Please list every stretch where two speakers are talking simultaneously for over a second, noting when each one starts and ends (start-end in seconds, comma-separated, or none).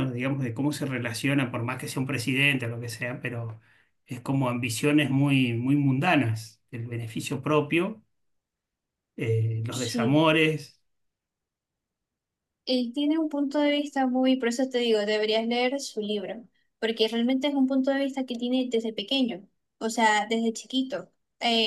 none